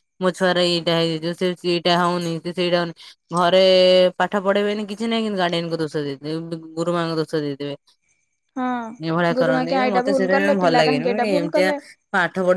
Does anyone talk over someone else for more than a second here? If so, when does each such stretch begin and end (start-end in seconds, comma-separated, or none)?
9.4-11.7